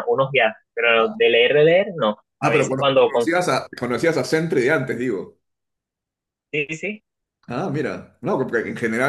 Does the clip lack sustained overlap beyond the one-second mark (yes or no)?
no